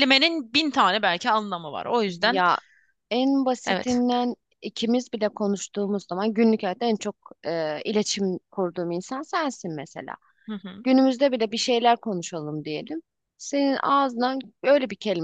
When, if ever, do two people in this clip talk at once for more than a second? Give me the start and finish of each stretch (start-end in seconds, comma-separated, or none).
none